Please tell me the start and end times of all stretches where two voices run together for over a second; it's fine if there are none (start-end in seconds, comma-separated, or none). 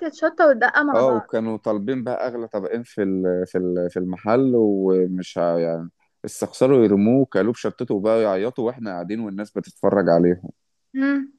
none